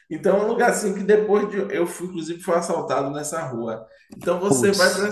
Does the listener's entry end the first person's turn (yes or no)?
no